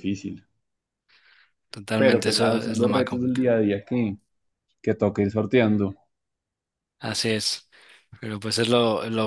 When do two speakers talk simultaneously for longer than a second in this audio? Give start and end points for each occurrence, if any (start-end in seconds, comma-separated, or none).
2.0-3.5